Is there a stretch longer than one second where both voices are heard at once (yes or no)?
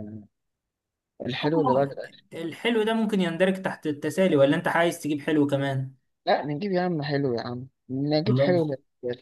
no